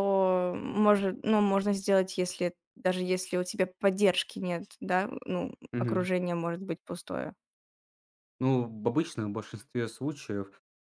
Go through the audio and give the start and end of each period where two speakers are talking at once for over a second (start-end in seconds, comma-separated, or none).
none